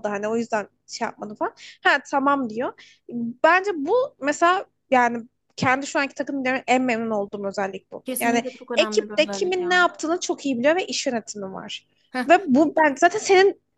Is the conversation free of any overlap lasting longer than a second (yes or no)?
no